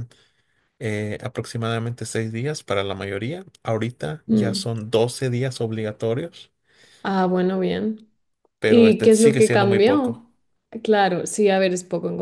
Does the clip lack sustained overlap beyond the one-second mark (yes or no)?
no